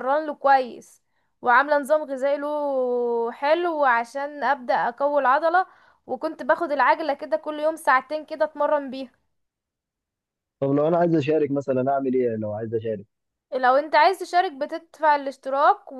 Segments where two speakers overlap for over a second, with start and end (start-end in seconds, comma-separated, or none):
none